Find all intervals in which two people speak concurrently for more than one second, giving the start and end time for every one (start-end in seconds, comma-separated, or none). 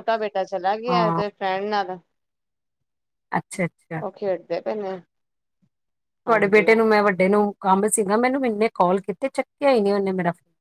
none